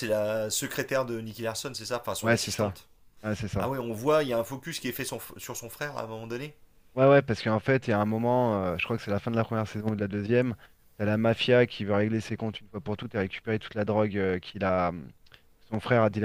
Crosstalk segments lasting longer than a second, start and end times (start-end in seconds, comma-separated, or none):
none